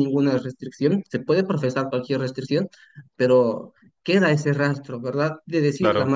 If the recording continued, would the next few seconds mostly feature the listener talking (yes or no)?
no